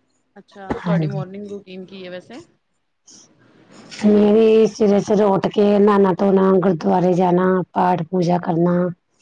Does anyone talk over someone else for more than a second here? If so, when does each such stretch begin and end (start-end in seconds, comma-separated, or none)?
none